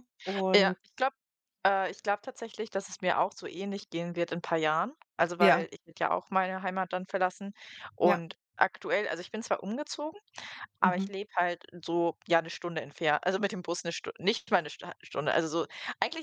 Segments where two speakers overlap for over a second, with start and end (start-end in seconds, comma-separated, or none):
none